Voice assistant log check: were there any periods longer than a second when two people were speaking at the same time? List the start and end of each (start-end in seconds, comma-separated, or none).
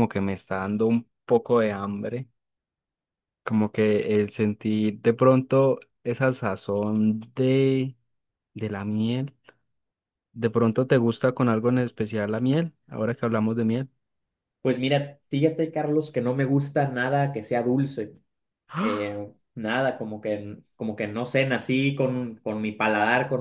none